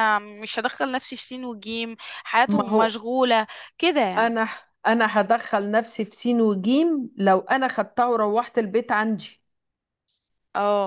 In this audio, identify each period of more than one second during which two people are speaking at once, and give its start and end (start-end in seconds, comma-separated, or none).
none